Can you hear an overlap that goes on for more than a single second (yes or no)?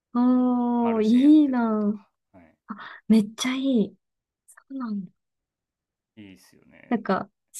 yes